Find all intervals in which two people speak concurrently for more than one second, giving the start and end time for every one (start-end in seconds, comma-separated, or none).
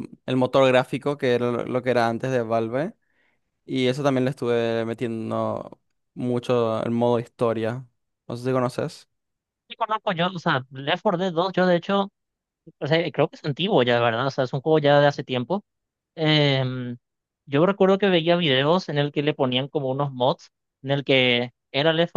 none